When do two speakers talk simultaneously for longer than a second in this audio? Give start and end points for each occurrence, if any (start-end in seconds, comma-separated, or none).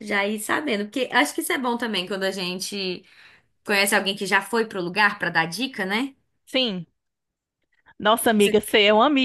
none